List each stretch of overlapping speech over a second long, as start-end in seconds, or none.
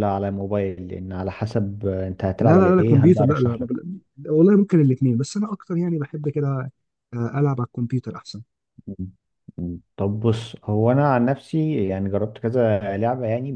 2.4-3.7